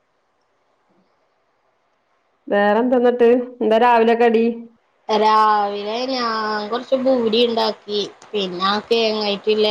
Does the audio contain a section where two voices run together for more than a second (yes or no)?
no